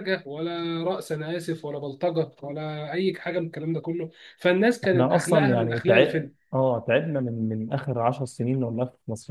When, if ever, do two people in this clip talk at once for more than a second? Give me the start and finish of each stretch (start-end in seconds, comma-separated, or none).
4.8-6.3